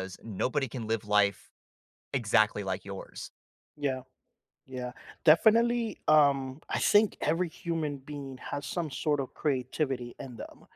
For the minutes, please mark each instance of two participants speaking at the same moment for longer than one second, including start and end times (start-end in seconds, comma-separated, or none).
none